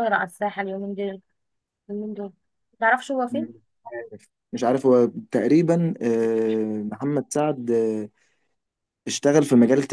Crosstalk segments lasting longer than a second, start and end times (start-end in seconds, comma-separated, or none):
none